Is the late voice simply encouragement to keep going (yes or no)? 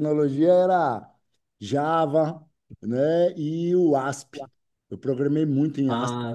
yes